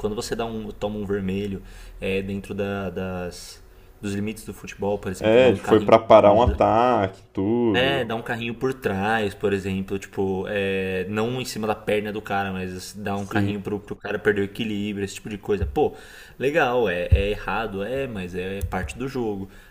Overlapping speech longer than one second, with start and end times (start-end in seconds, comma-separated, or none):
5.2-6.4